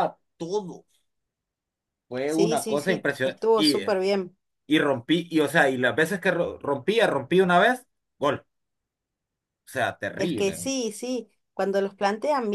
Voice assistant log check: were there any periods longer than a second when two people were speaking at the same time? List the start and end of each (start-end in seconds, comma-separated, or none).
2.2-4.0